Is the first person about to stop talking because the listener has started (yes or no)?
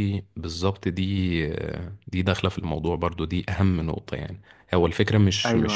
no